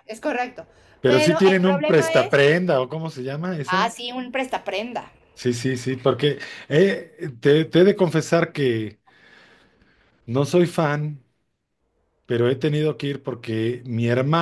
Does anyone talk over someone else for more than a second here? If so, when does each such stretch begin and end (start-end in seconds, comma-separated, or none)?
1.1-2.4